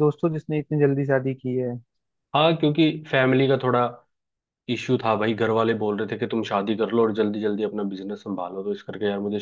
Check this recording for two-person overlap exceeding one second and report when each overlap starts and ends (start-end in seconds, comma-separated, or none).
none